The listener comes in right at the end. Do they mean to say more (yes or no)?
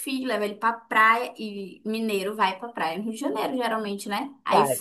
no